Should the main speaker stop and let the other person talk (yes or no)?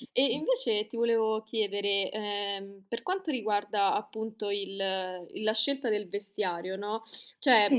no